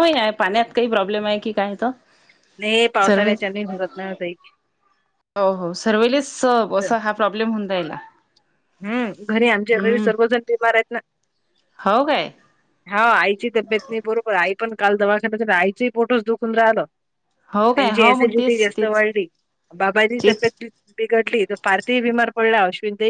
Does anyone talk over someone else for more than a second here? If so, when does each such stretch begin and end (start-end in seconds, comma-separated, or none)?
17.7-19.0